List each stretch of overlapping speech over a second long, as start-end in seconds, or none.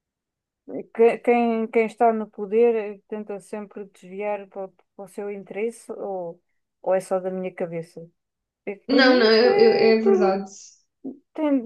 8.9-10.4